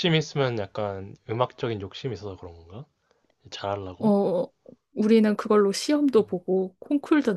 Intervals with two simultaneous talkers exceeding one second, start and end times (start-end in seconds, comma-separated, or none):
none